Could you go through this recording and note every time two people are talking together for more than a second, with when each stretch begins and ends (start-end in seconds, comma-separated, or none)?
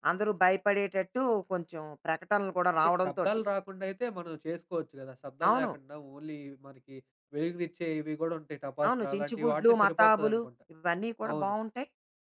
8.9-10.6